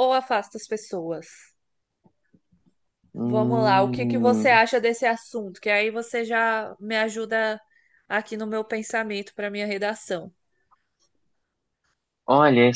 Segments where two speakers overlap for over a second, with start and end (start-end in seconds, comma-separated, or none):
3.2-4.6